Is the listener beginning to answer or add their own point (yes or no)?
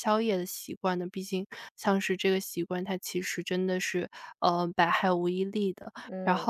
no